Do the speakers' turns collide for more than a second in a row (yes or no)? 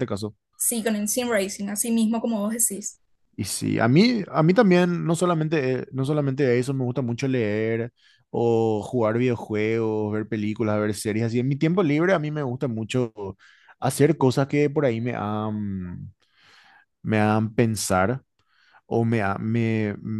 no